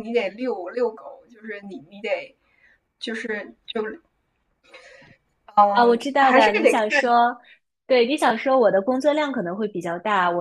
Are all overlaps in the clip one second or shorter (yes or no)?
no